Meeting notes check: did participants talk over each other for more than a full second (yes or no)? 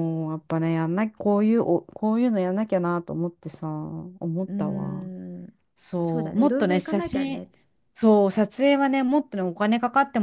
yes